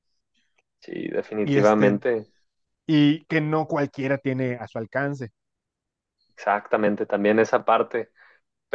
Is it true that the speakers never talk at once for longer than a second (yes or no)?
yes